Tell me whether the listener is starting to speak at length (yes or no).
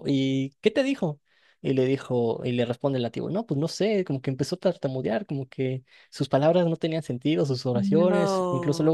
no